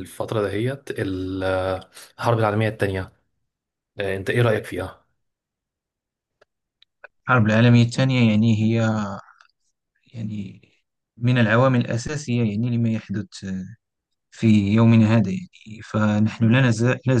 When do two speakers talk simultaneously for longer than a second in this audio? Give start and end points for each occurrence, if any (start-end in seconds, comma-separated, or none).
none